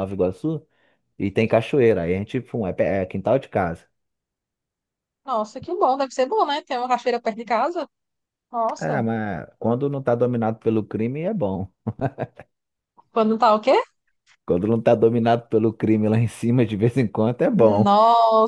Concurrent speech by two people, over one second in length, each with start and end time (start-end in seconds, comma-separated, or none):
none